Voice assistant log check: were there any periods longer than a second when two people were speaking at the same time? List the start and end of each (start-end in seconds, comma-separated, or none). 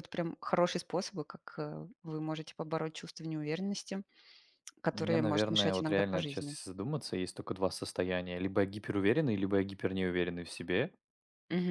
4.9-6.6